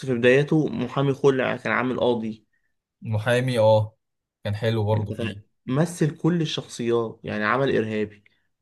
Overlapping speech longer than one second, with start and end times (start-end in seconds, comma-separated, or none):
none